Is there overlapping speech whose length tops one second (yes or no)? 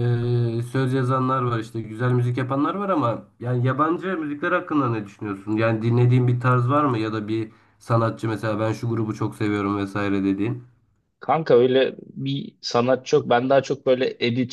no